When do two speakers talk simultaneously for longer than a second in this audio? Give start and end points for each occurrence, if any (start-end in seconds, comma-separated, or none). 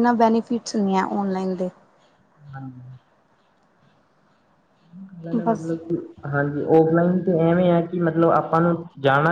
none